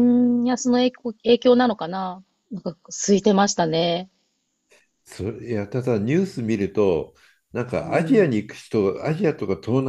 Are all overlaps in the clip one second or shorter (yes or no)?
yes